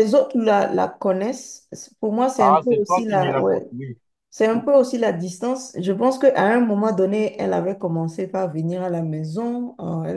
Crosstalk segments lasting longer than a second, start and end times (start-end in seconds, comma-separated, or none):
2.4-3.6